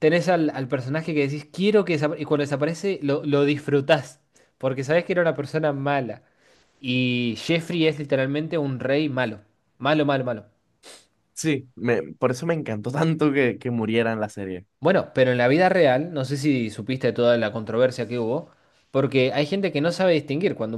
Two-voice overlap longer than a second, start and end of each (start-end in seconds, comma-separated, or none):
none